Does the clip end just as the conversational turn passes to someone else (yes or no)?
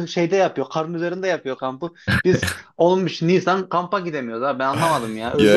yes